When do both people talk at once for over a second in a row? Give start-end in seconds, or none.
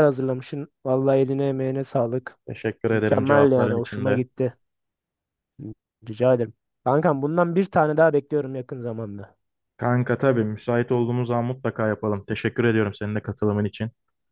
2.9-4.2